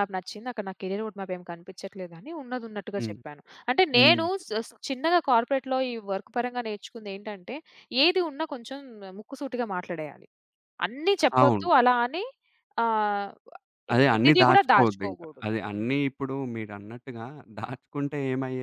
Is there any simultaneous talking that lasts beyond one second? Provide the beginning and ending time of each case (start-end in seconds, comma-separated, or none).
14.1-15.9